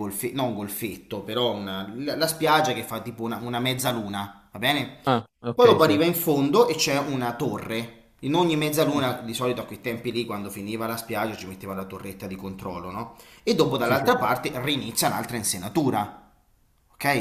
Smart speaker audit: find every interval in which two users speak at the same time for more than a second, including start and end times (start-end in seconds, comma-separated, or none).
none